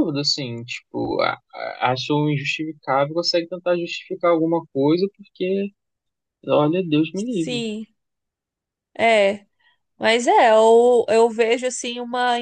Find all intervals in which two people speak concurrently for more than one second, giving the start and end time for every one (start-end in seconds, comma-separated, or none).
none